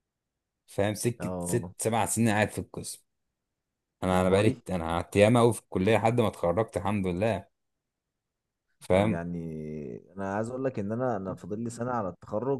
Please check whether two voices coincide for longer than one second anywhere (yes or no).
no